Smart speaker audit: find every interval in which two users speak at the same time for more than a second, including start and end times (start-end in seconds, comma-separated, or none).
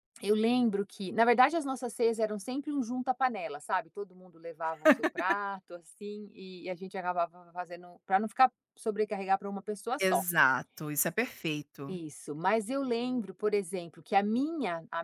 none